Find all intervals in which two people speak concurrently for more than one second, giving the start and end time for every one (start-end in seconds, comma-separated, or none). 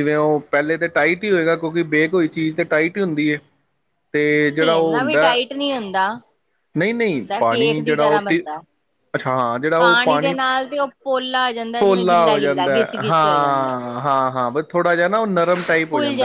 6.9-8.4, 11.8-13.7